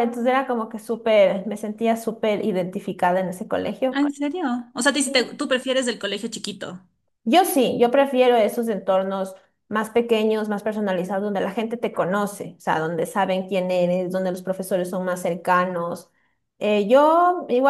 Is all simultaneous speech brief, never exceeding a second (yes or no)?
yes